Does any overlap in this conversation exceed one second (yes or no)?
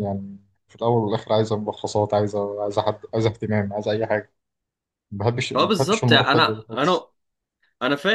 yes